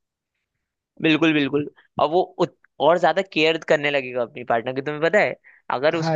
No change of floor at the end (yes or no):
yes